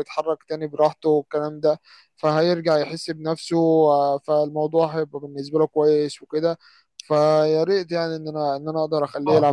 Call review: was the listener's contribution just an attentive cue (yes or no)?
no